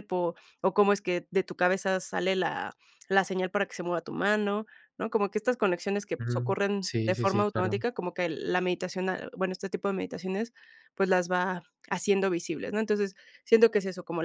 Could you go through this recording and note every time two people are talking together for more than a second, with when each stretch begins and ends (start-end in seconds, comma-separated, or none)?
6.2-7.8